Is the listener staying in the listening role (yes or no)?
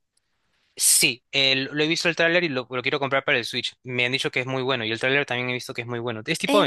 no